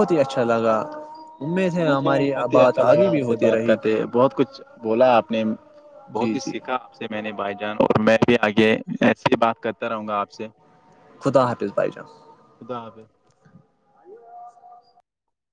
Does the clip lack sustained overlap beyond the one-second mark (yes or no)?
no